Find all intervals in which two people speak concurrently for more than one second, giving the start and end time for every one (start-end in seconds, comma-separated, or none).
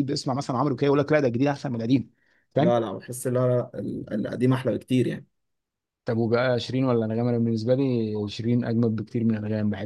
none